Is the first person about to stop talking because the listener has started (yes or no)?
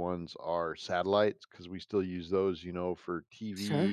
no